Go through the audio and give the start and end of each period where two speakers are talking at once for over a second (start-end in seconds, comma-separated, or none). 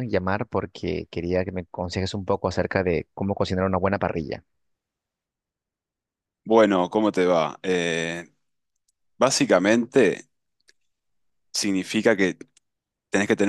none